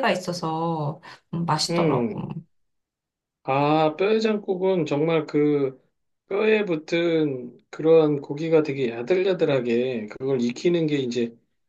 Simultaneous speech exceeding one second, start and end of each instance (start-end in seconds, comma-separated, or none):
none